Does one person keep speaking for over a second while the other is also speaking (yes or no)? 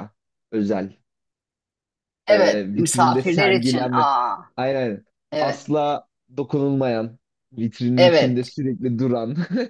yes